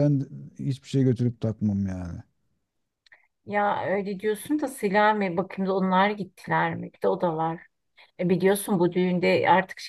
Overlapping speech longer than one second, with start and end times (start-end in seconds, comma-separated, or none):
none